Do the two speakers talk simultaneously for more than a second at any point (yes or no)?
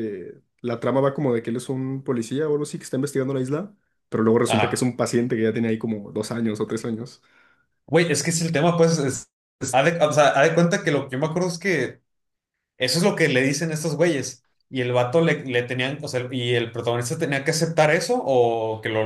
no